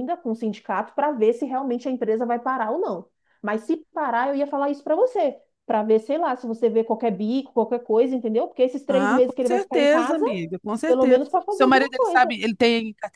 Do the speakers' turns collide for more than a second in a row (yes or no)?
yes